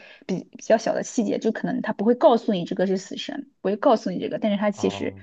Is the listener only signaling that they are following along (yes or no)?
no